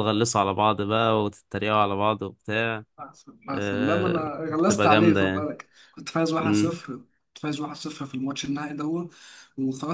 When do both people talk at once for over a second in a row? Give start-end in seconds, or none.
3.5-5.5